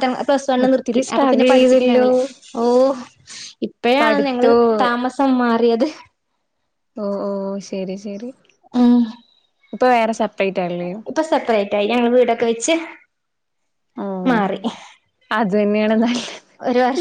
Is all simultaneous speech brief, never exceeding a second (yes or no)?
no